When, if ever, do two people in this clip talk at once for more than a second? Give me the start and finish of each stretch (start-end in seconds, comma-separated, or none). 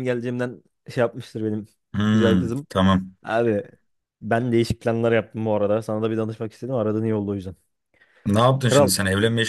none